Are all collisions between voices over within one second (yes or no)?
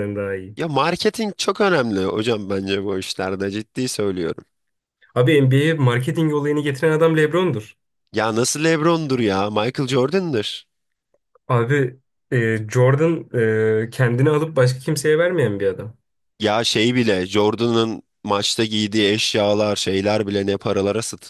yes